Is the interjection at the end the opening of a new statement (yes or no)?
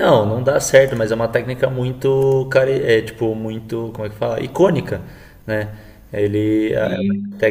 no